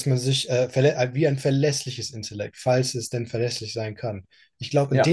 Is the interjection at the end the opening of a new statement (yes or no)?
no